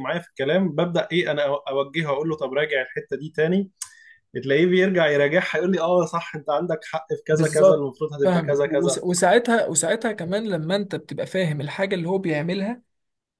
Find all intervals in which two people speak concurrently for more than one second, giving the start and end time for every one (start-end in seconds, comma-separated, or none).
7.3-9.0